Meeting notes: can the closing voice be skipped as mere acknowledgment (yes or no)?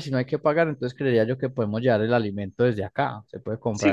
no